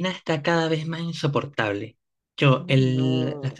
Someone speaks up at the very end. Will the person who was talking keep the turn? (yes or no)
yes